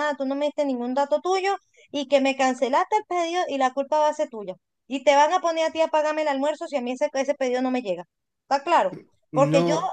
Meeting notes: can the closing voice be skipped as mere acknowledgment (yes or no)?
yes